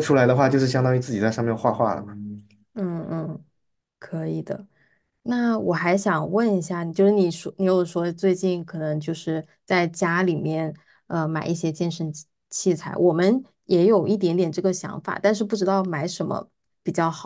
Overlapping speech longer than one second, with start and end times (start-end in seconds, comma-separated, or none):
none